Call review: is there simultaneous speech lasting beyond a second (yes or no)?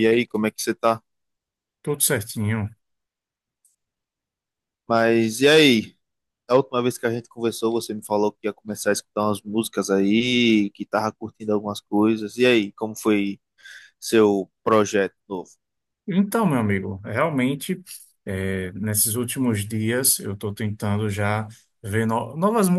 no